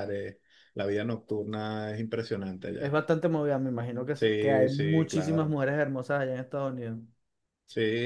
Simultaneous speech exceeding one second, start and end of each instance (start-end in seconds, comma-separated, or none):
4.1-5.6